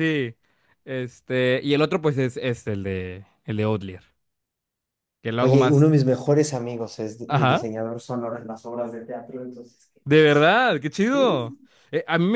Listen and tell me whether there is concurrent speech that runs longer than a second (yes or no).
no